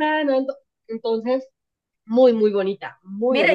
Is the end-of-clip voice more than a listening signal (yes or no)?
yes